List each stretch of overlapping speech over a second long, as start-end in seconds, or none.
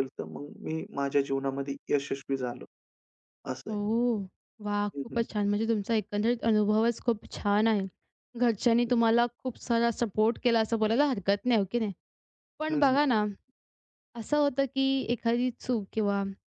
none